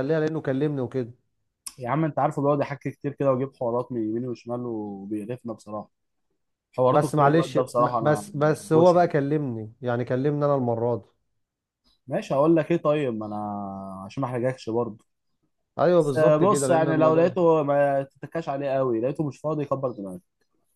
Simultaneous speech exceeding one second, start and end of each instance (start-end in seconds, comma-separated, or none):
6.9-9.1, 16.0-17.4